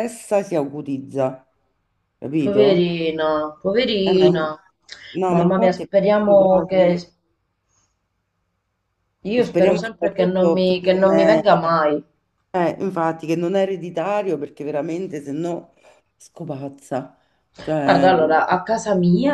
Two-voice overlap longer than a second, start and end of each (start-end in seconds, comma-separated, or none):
5.3-7.0, 9.4-11.4